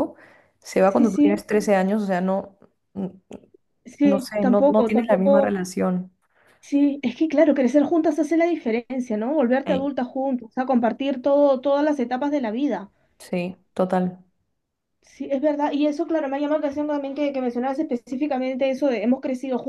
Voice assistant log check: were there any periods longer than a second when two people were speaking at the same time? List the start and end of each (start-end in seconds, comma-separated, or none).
4.0-5.5